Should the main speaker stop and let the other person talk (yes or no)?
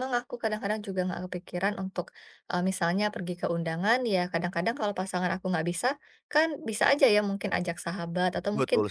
no